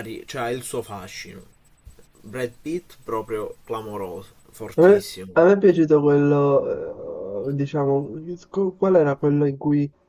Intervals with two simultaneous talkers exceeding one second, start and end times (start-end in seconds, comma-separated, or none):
none